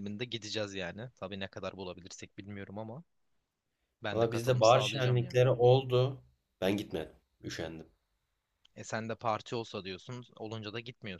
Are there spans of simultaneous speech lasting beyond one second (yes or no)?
yes